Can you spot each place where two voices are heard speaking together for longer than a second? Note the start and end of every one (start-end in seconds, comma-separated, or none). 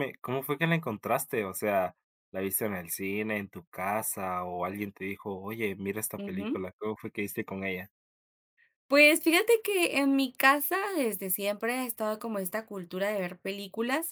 none